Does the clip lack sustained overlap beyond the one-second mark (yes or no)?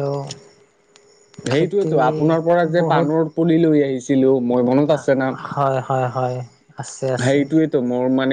yes